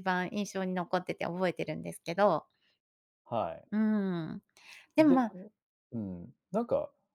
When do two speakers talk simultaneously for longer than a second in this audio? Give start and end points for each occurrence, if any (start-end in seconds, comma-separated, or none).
none